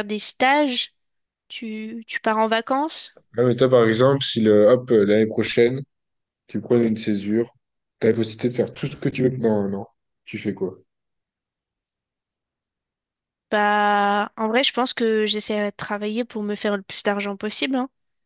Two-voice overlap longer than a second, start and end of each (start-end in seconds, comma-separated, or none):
none